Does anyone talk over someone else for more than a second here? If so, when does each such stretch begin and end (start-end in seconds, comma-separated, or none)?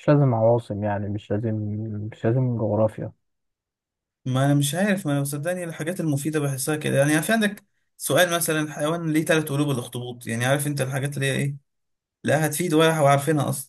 none